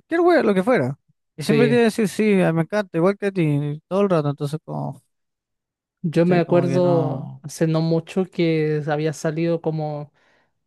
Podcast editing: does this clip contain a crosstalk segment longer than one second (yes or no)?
yes